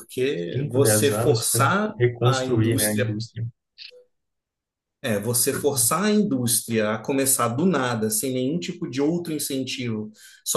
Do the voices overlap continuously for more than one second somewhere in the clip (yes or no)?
yes